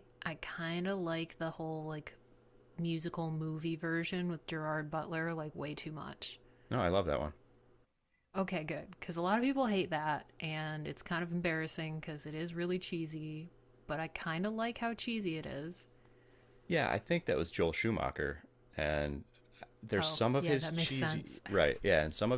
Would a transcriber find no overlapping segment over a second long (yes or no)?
no